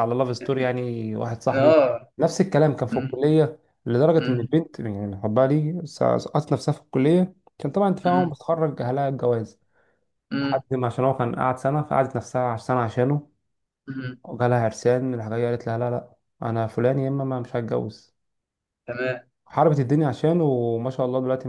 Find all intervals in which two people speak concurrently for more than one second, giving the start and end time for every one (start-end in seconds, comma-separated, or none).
none